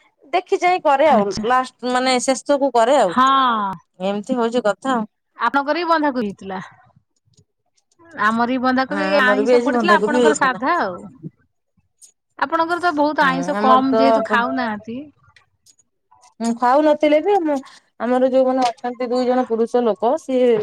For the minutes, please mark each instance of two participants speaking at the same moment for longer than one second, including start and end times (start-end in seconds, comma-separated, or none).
8.9-10.6